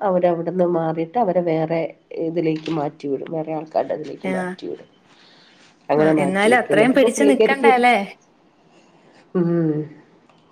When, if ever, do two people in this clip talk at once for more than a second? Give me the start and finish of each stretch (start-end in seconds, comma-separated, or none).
6.0-7.8